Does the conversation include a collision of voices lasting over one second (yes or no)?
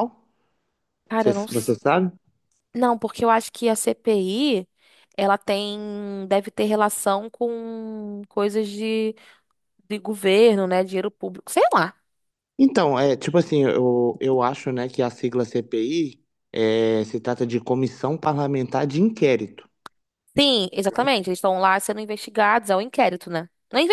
no